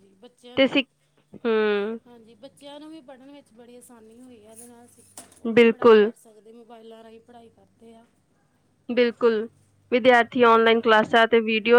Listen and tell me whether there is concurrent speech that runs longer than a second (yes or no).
no